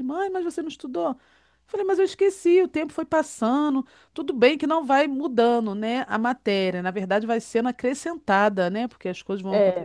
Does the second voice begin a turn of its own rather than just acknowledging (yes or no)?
yes